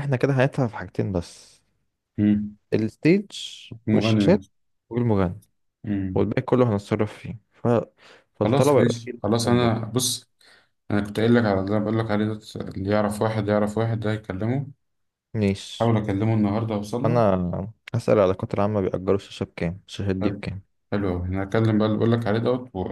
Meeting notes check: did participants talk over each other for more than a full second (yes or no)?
yes